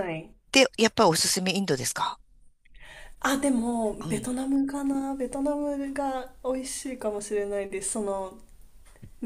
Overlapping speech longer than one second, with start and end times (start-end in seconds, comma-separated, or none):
none